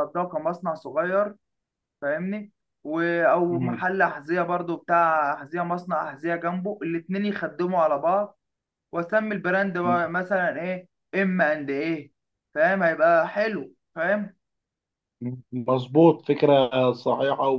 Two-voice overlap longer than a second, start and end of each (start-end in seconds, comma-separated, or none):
none